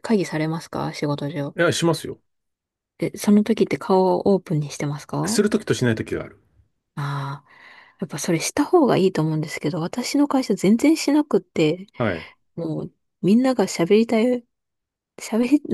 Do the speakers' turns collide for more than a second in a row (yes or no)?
no